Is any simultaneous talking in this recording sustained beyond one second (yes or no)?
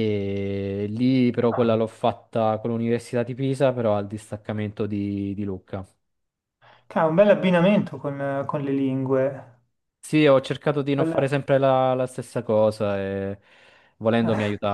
no